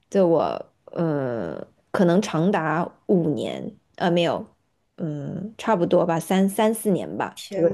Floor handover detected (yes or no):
no